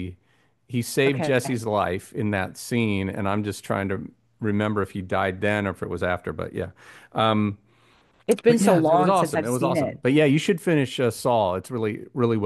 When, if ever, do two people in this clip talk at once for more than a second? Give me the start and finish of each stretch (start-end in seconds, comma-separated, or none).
8.5-10.0